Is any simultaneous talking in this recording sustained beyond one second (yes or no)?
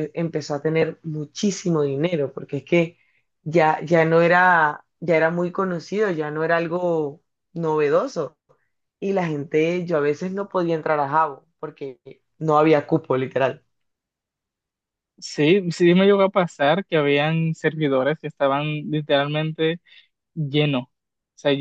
no